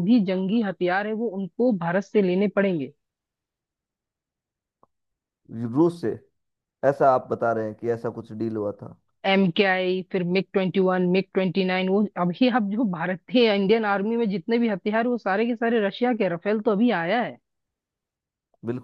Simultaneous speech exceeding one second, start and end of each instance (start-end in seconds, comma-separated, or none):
none